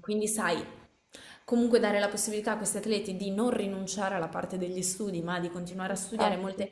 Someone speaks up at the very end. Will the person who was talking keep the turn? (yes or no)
yes